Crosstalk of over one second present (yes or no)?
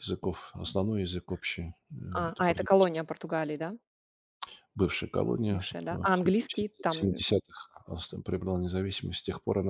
yes